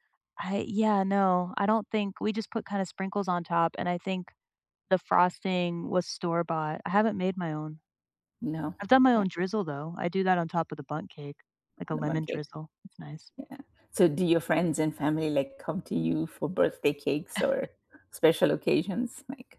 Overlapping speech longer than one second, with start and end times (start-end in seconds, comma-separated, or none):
none